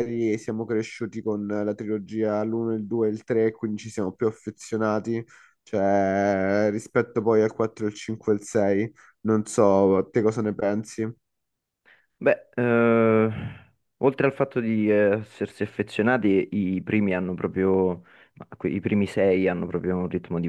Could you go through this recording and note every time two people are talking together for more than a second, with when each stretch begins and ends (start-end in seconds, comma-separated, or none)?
none